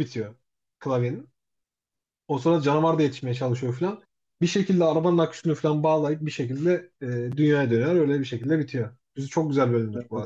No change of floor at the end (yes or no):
no